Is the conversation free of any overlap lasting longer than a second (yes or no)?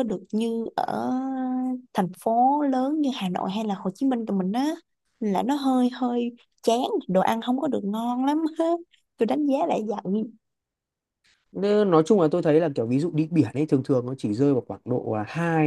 yes